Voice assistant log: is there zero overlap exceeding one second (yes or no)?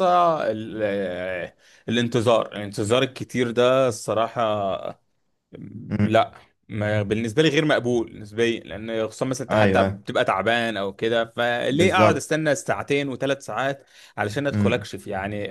yes